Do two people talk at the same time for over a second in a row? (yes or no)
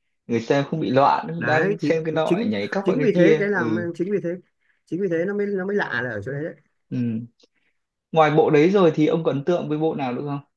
yes